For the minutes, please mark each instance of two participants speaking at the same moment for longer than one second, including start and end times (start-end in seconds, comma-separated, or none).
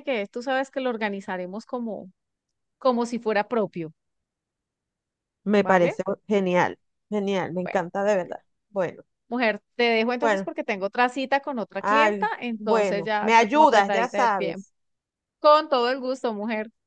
11.8-14.7